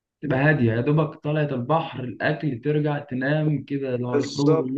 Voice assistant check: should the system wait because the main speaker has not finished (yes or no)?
no